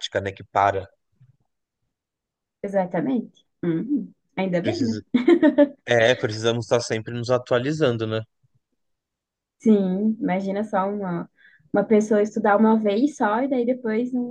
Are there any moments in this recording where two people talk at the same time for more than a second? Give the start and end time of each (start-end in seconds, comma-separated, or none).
none